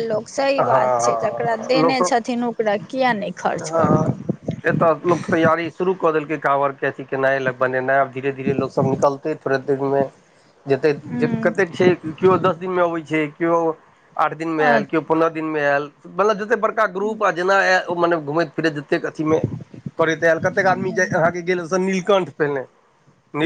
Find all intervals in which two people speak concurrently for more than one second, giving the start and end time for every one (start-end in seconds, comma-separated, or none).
0.7-2.1